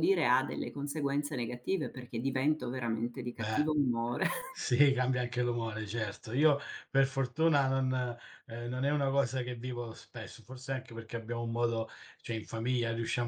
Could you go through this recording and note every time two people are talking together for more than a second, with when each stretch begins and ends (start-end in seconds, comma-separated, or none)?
none